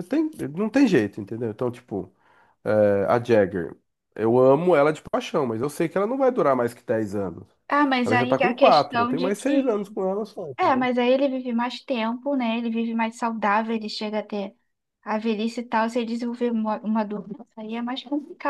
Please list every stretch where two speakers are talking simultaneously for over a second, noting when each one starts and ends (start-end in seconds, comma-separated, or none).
8.0-9.9